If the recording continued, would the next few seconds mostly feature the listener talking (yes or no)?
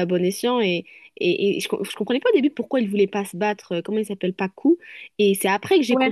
no